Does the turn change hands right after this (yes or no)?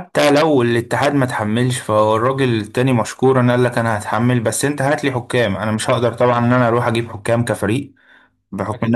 no